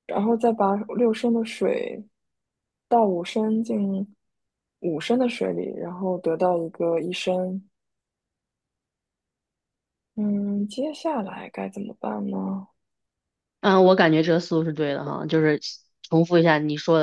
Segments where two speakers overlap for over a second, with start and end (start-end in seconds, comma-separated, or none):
none